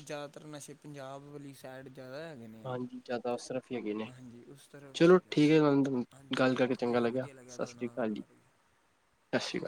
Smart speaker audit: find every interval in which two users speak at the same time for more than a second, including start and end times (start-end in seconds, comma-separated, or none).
2.7-4.1, 6.4-8.5